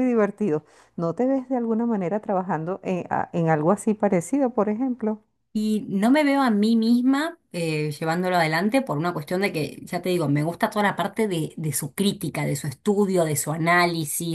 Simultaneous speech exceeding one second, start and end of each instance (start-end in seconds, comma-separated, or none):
none